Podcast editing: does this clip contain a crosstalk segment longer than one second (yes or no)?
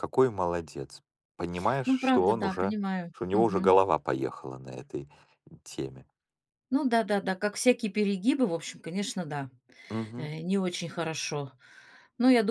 yes